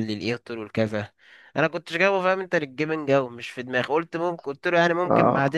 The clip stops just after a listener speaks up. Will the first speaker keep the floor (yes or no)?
yes